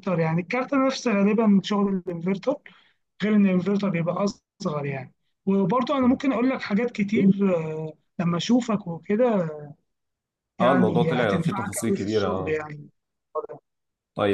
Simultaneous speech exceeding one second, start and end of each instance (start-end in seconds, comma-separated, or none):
10.6-12.6